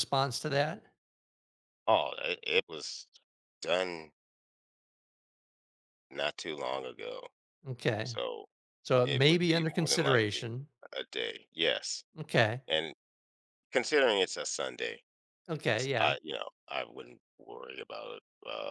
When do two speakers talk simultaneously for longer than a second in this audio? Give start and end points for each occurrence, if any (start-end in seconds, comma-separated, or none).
9.0-10.5